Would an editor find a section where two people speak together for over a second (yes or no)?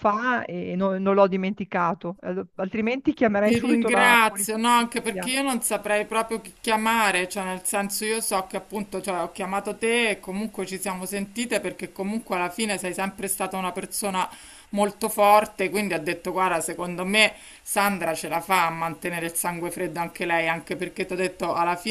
yes